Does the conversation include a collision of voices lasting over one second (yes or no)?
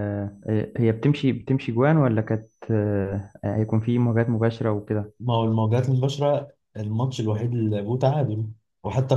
no